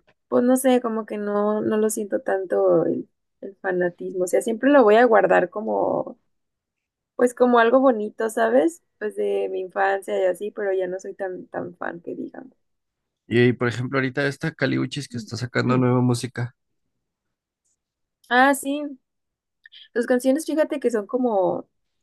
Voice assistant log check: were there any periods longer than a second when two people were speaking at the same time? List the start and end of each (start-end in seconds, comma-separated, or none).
none